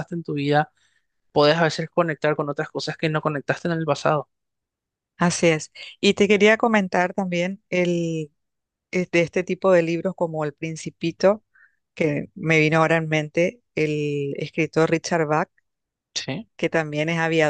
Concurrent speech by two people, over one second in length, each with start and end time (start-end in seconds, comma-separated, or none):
none